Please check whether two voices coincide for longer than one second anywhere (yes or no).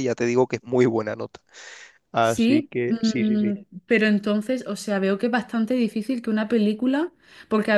yes